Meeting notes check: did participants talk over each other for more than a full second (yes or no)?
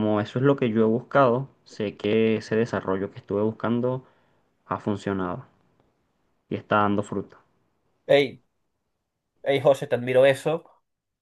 no